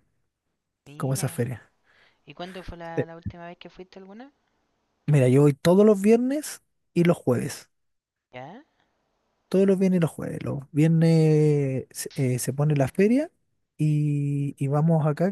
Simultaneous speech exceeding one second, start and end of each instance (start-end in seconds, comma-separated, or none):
none